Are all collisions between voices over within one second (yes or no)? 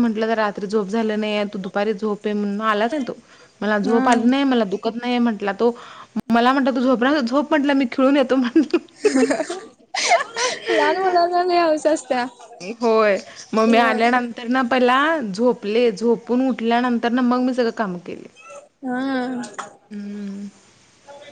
yes